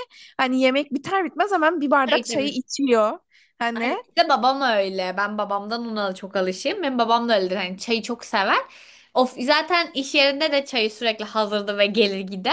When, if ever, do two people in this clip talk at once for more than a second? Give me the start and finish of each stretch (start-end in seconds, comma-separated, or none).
none